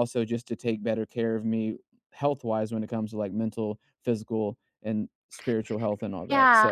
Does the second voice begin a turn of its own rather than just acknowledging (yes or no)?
yes